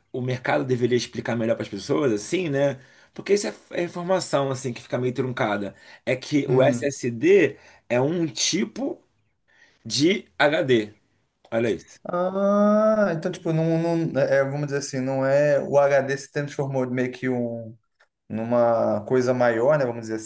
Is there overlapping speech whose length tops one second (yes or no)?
no